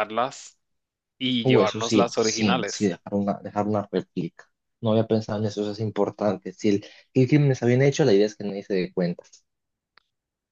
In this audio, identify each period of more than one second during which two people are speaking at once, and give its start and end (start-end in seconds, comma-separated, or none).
1.4-2.9